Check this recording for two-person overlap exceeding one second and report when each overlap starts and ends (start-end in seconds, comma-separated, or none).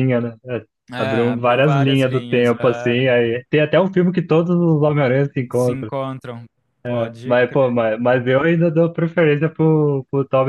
0.9-3.1